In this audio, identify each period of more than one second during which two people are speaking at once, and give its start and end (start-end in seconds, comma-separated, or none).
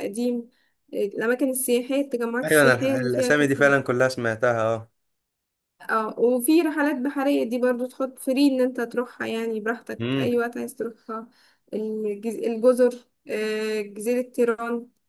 2.4-3.7